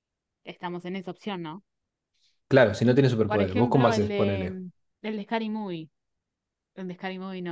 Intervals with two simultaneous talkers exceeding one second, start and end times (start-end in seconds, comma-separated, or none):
3.2-4.6